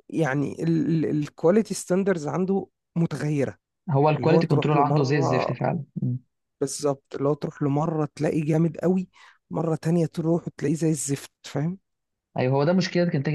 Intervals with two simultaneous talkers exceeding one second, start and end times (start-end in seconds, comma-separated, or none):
4.2-5.5